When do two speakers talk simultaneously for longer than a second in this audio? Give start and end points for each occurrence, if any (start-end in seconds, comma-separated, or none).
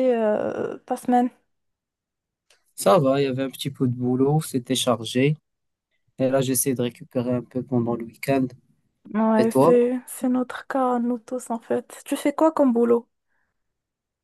none